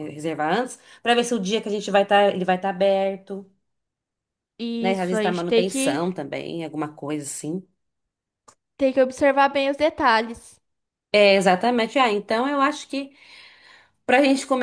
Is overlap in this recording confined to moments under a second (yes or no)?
no